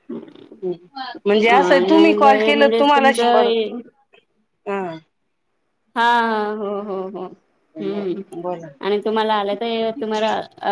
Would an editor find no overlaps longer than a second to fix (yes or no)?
no